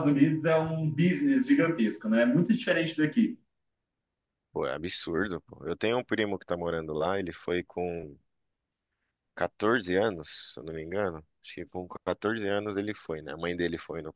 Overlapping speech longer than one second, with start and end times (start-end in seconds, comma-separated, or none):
none